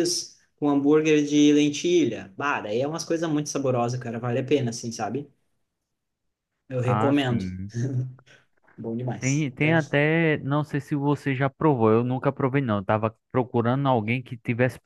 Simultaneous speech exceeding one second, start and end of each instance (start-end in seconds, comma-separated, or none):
none